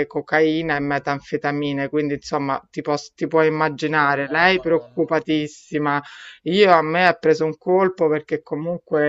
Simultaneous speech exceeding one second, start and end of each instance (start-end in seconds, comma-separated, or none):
3.9-5.5